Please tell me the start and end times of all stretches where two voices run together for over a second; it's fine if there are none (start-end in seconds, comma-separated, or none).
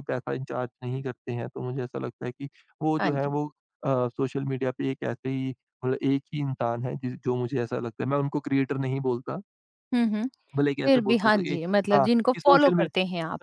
10.8-12.9